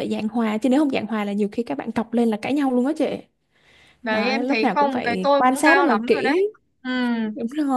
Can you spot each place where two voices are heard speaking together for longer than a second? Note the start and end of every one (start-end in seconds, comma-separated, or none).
4.1-6.3